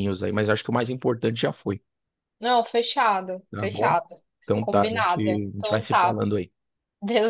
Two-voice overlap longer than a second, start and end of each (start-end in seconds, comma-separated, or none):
4.6-6.2